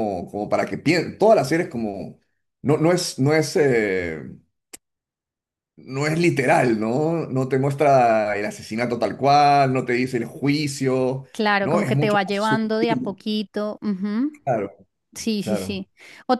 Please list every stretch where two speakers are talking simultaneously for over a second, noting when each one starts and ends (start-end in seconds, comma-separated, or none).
11.6-13.2